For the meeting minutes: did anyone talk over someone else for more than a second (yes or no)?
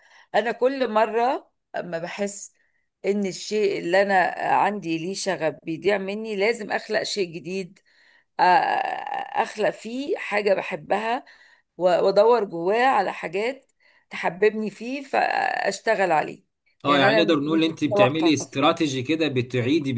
yes